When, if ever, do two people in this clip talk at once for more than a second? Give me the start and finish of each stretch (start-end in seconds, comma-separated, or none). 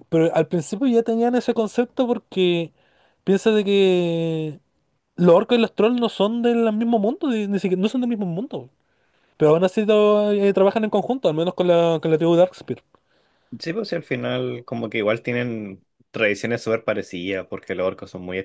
none